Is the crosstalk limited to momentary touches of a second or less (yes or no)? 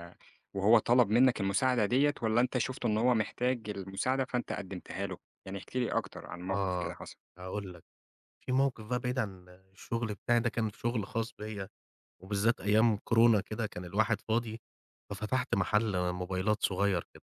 yes